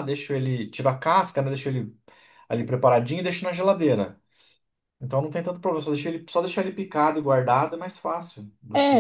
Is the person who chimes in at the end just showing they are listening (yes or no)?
no